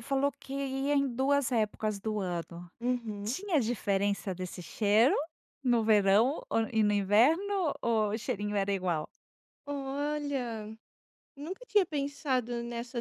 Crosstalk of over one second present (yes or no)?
no